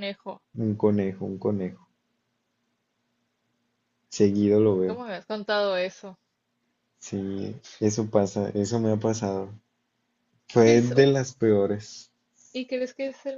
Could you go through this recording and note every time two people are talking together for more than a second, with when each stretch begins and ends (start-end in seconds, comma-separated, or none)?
none